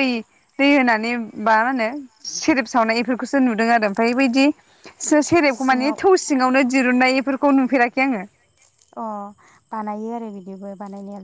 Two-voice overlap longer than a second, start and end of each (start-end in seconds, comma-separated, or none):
none